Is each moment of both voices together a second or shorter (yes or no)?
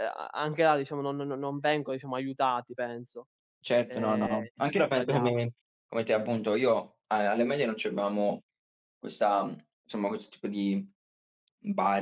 no